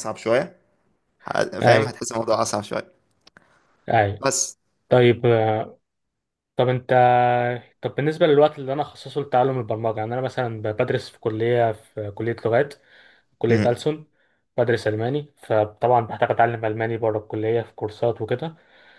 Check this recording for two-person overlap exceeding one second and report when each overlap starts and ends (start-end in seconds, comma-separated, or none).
none